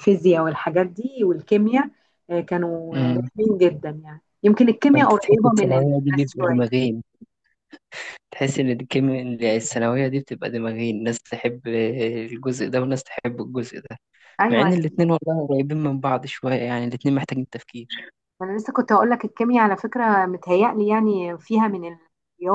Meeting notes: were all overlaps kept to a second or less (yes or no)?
no